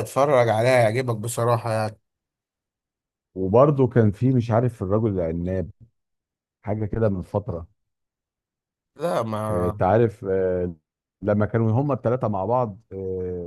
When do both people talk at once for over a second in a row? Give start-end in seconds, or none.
none